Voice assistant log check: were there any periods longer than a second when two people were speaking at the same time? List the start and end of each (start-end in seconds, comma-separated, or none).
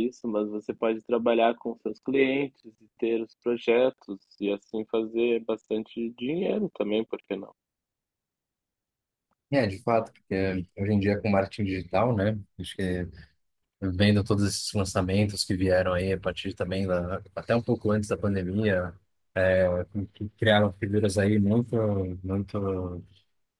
none